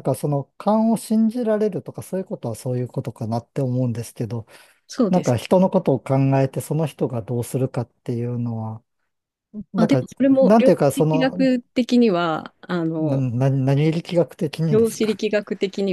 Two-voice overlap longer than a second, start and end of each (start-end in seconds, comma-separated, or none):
9.8-11.5